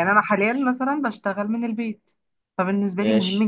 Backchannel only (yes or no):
yes